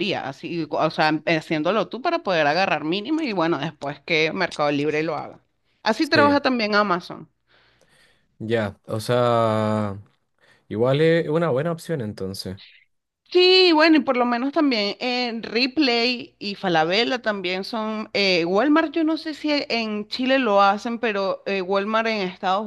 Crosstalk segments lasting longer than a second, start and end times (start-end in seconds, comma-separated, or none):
none